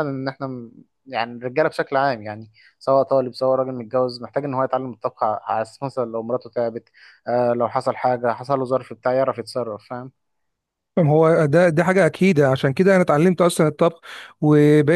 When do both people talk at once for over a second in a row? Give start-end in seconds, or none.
none